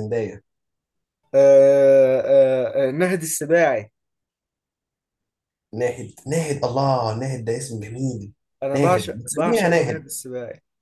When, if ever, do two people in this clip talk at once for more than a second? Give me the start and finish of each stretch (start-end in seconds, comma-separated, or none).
8.8-10.0